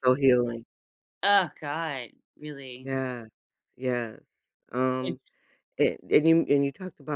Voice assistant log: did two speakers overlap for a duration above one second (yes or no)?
no